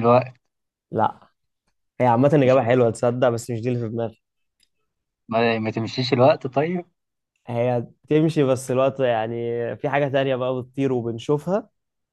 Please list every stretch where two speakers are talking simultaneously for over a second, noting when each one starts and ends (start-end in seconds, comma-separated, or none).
none